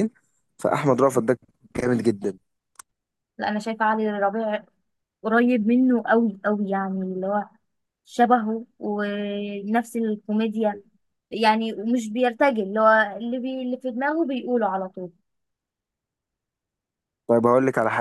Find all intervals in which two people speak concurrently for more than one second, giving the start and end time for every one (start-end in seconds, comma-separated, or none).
none